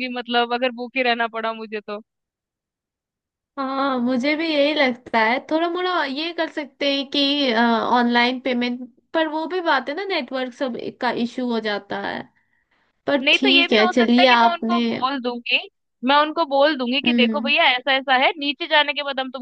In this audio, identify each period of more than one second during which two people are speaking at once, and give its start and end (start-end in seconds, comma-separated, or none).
13.2-14.8